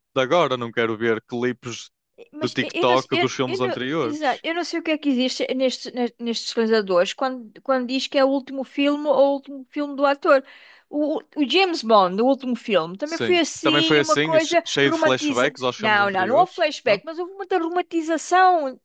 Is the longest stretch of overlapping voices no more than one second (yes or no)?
no